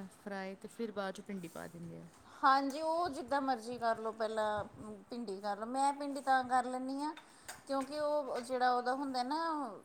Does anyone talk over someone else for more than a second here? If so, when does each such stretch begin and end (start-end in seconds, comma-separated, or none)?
none